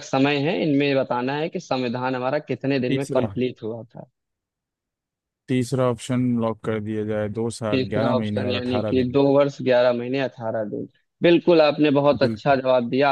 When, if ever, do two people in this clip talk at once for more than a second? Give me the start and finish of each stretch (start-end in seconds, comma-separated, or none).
7.7-9.2